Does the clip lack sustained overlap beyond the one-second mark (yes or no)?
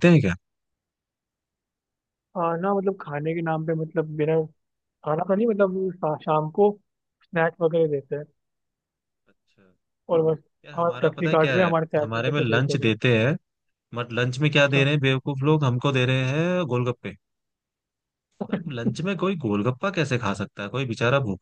no